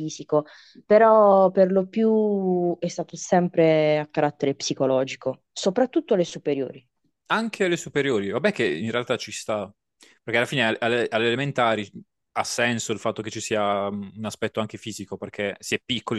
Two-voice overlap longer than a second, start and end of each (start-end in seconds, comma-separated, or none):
none